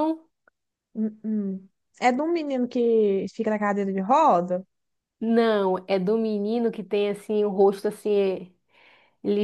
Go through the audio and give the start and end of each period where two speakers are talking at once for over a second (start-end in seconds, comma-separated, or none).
none